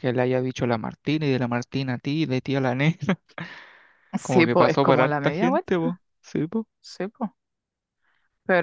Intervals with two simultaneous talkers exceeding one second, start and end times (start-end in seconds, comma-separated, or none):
4.2-5.8